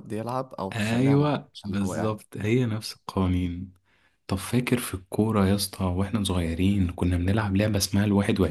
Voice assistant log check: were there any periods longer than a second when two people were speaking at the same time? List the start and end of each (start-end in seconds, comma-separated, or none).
0.7-2.1